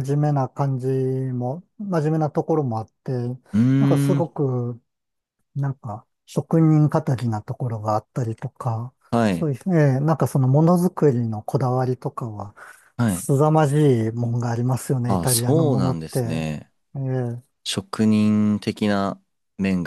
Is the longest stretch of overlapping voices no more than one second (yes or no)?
no